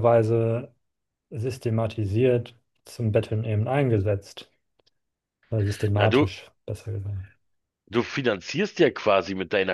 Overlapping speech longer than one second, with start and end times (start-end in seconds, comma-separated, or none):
none